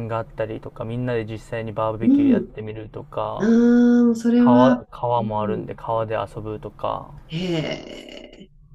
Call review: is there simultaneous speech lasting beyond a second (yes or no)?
yes